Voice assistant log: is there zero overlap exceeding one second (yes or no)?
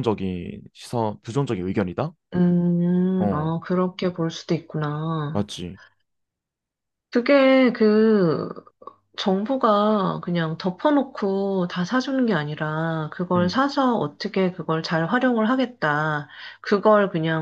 yes